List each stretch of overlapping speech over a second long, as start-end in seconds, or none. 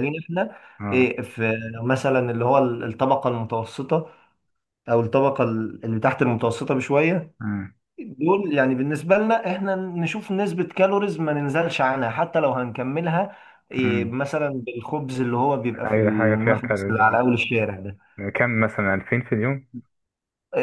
15.9-17.2